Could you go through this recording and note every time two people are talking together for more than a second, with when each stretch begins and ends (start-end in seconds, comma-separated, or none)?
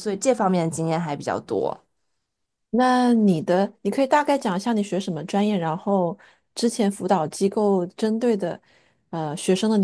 none